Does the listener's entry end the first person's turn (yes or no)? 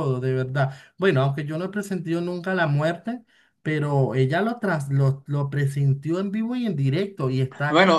yes